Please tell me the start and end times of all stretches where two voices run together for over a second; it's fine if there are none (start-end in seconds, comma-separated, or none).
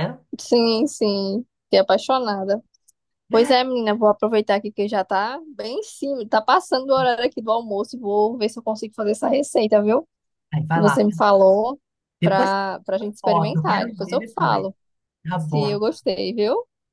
13.2-14.7